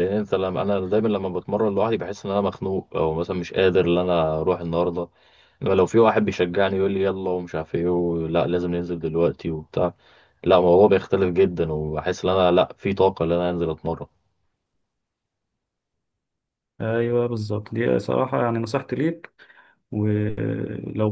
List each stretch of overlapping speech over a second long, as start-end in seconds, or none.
none